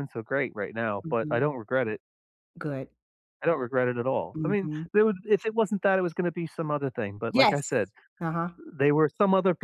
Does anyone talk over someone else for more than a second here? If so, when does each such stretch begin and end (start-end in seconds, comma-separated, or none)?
none